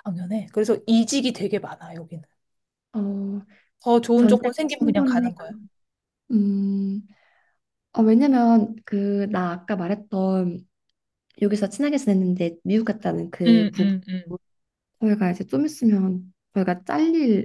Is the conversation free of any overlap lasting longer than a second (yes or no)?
no